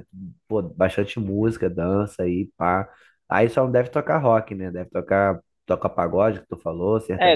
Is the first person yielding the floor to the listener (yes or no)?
yes